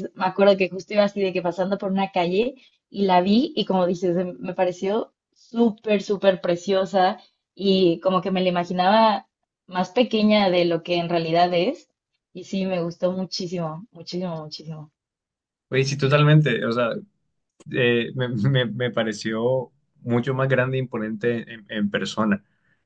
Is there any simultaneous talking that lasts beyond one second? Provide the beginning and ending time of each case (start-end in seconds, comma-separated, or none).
none